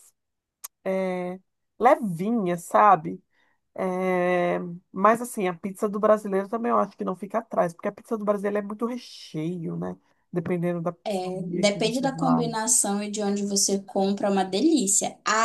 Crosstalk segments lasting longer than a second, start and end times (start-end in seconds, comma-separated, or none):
11.1-12.5